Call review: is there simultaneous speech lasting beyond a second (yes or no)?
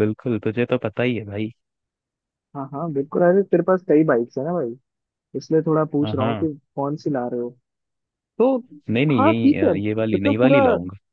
yes